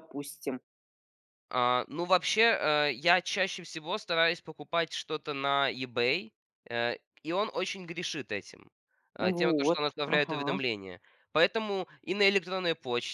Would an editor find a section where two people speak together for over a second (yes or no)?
yes